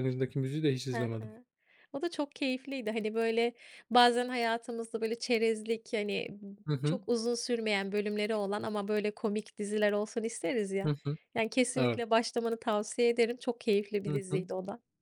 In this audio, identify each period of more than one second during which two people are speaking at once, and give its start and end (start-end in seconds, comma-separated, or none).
none